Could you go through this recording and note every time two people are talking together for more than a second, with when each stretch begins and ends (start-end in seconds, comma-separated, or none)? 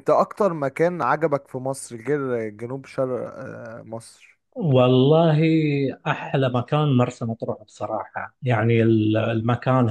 none